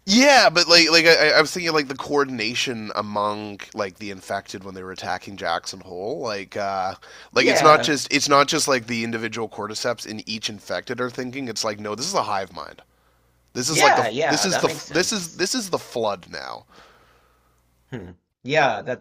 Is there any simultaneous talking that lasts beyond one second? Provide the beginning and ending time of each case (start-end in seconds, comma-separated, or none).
13.7-15.4